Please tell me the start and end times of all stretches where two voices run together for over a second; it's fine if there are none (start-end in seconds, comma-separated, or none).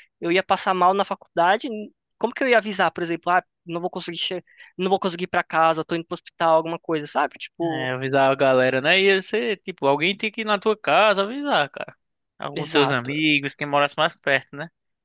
none